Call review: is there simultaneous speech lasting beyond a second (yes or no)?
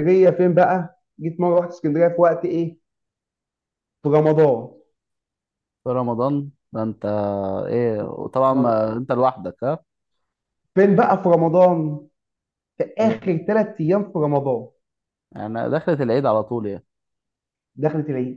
no